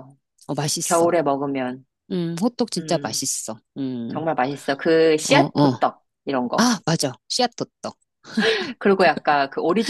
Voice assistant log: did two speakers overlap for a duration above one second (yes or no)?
no